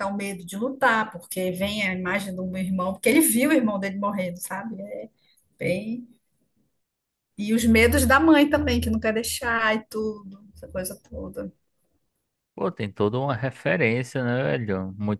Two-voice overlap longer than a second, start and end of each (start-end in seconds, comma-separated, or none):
none